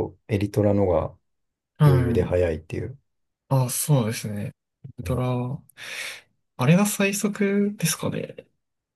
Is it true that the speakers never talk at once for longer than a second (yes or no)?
yes